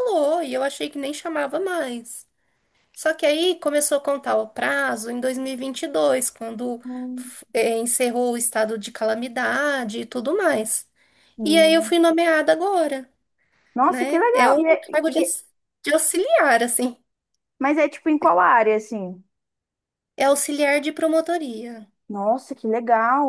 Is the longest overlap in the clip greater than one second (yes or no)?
yes